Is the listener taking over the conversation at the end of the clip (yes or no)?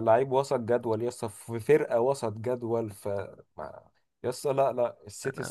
no